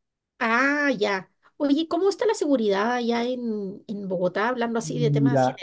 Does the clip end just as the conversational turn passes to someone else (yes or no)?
yes